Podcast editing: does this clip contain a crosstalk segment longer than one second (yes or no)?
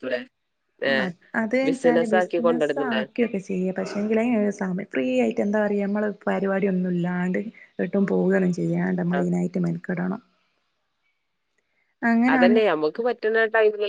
yes